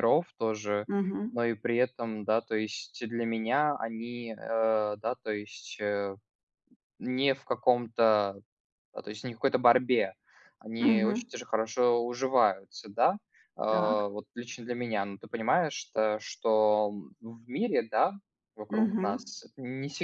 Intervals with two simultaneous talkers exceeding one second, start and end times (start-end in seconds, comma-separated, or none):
none